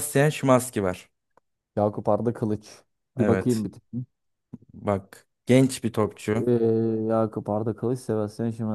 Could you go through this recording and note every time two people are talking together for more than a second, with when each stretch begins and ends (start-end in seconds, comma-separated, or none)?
none